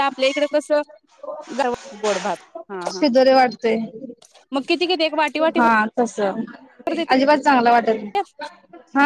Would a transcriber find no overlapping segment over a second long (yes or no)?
yes